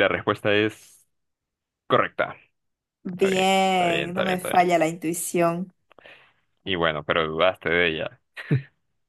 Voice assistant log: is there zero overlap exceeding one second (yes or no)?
no